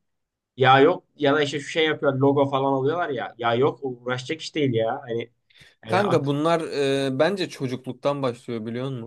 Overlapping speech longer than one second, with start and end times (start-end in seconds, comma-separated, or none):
none